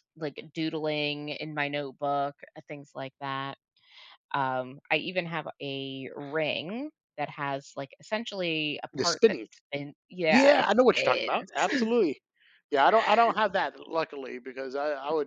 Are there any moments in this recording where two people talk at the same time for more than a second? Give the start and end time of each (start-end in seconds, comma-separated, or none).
10.3-11.9